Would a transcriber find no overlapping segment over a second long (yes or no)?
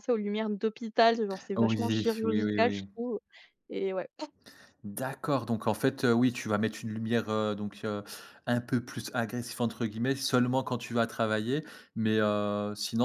no